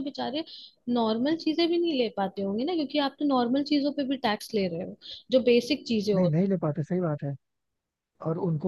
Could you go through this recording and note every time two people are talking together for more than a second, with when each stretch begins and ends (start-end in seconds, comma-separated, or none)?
none